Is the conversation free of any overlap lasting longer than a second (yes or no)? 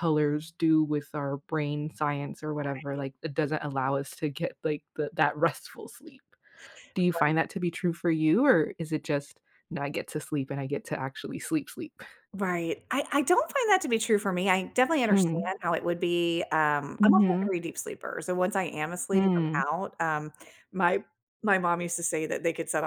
yes